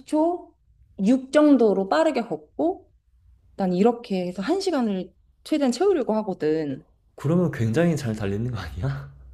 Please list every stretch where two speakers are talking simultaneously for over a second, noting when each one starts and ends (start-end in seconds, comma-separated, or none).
none